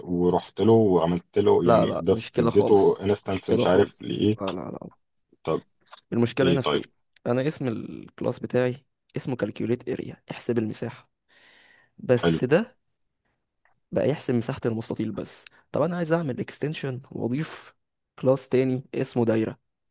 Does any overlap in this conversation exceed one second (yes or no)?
yes